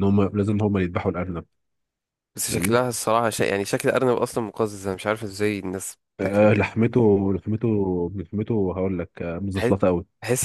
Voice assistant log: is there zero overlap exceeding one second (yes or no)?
yes